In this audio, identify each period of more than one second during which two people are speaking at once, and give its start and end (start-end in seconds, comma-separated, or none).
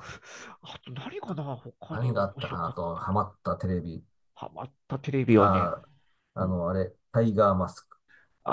1.9-3.2